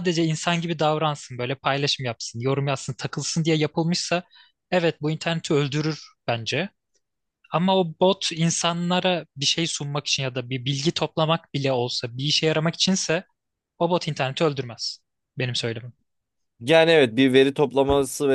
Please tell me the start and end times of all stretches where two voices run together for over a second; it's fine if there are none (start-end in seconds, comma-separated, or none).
none